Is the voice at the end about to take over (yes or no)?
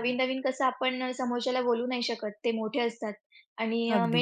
no